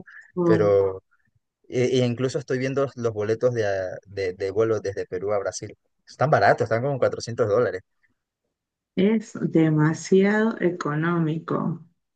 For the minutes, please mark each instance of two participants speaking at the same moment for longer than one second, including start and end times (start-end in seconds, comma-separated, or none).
none